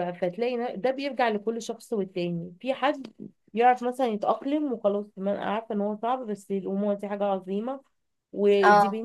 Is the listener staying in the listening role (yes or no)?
yes